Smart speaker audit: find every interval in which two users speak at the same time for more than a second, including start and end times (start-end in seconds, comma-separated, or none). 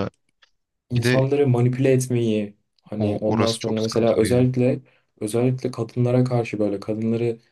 3.0-4.5